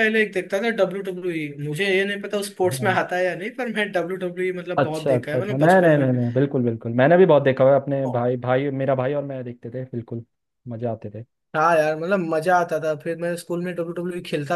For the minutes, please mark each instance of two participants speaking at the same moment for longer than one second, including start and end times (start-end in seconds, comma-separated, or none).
4.8-6.1